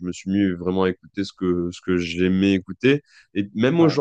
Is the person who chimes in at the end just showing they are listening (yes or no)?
yes